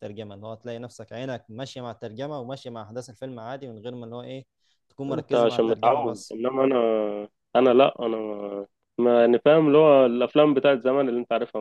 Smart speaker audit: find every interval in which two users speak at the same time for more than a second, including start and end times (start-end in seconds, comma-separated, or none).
5.1-6.4